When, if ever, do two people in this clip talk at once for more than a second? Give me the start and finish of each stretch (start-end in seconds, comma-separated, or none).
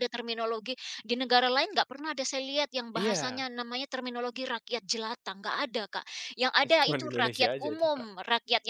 6.6-8.1